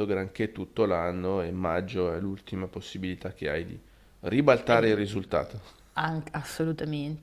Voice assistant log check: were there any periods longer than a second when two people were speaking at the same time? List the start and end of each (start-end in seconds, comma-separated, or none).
none